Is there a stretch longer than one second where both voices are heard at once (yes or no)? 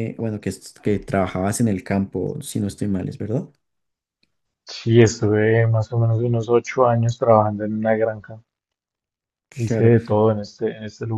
no